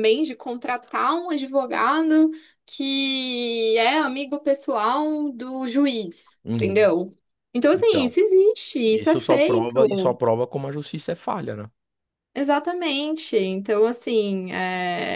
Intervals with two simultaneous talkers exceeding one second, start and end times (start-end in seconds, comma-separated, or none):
8.9-10.2